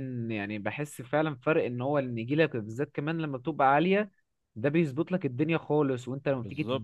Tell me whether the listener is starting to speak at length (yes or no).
no